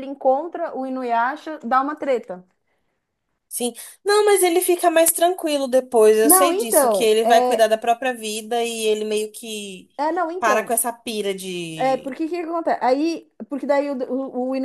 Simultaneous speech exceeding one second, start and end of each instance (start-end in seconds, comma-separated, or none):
6.2-7.7